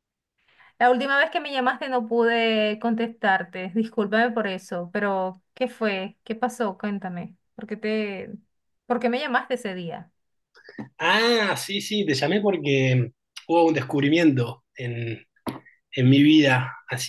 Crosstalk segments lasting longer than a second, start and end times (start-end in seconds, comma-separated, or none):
none